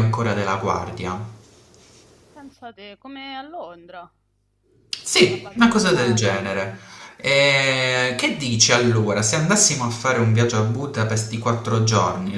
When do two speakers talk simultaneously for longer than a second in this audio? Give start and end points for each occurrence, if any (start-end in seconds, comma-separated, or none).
5.3-6.7